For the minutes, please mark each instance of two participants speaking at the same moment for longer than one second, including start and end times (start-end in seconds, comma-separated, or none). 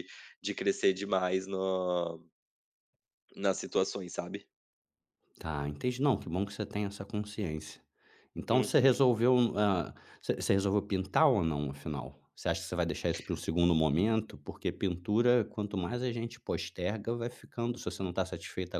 none